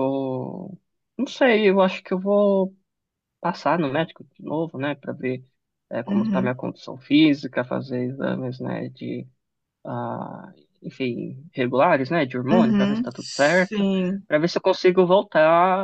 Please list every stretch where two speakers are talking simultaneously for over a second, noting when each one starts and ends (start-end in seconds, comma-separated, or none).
12.5-13.8